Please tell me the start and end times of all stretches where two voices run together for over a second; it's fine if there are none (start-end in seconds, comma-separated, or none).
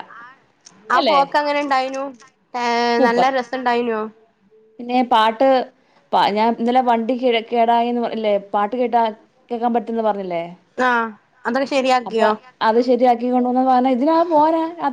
none